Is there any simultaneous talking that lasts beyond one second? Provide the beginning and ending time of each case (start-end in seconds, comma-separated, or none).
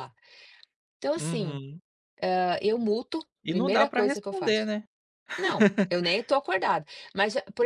3.4-4.7